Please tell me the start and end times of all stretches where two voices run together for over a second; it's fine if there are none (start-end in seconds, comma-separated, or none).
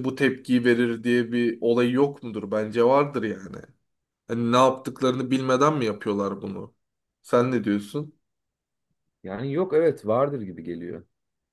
none